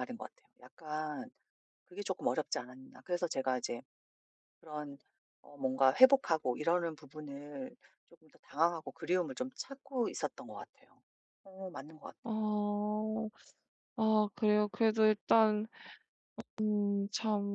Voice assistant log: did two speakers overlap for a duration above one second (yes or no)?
no